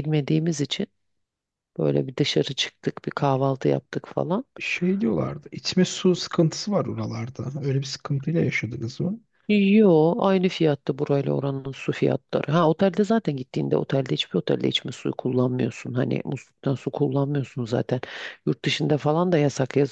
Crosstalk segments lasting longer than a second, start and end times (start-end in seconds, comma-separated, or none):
none